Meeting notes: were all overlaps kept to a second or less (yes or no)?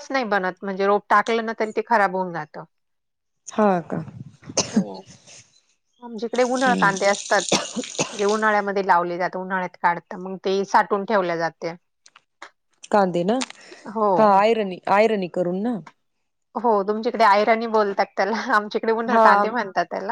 yes